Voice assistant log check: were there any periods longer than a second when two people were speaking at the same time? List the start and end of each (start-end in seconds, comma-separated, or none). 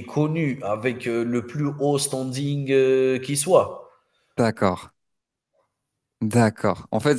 none